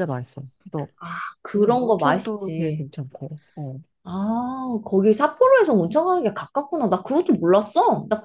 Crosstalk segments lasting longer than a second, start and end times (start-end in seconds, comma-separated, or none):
1.5-2.9